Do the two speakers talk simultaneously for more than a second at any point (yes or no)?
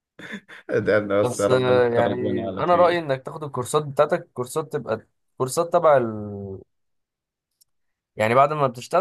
yes